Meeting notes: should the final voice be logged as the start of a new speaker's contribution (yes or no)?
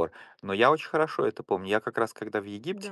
no